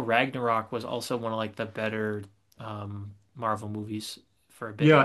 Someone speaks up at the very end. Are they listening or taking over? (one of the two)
taking over